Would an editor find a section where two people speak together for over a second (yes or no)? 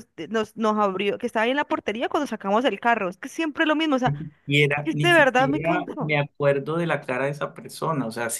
yes